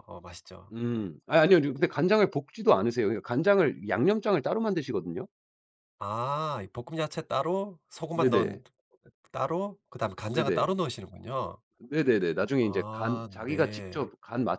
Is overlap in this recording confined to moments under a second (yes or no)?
no